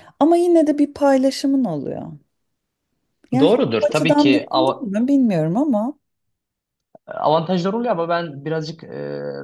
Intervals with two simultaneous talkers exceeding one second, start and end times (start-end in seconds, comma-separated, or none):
3.4-4.9